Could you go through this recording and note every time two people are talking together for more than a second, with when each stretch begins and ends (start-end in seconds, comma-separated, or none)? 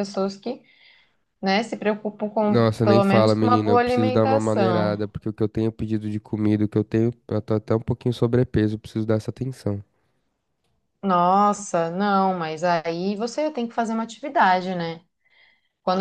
2.5-5.0